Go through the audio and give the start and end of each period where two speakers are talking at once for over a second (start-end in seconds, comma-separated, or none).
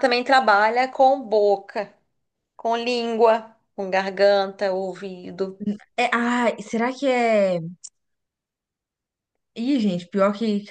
none